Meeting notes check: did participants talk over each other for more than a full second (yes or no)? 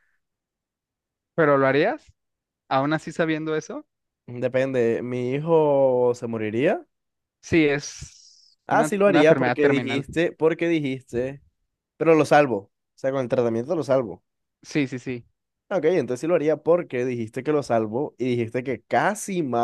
yes